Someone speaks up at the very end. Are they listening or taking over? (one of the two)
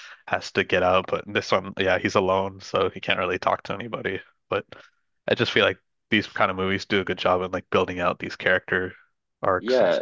taking over